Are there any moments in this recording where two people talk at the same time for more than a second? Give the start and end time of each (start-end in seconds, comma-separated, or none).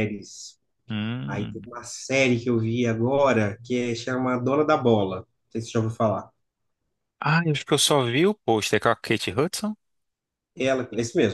none